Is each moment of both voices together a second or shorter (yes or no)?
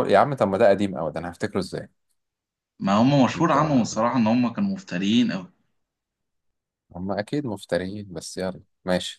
yes